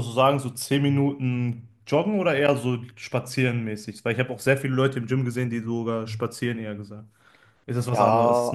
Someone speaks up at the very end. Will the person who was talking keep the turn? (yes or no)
no